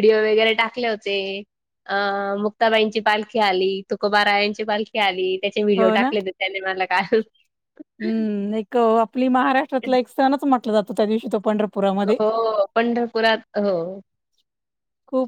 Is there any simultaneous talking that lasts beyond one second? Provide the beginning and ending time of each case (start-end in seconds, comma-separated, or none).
none